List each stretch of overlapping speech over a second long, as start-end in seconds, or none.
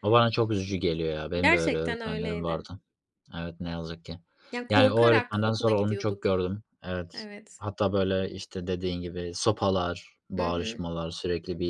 1.4-2.7, 4.7-6.5